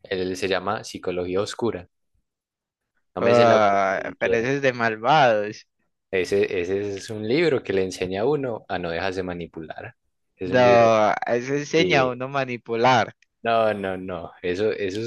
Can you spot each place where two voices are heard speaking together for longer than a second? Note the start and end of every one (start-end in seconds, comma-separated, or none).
3.2-4.5